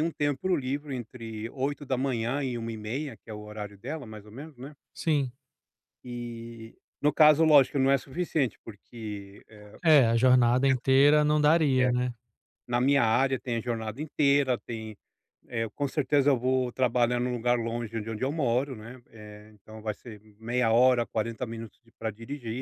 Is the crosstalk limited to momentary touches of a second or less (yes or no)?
yes